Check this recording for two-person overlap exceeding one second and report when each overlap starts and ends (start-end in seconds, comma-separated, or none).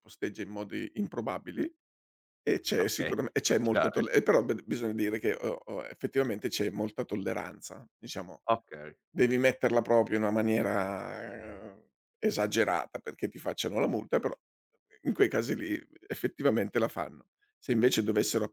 2.8-4.1